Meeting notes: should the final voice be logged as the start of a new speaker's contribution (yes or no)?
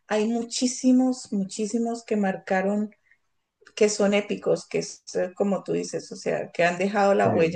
no